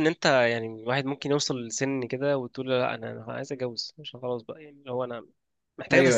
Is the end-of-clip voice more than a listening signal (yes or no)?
no